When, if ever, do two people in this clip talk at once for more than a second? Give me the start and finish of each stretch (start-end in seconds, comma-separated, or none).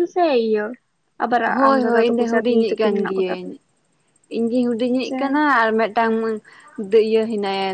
1.5-3.5